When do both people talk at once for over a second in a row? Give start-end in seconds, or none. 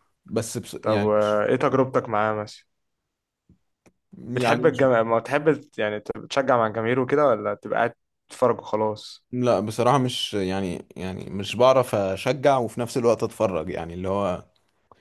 none